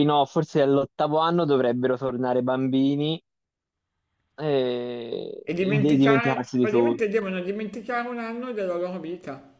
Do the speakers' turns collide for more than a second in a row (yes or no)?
yes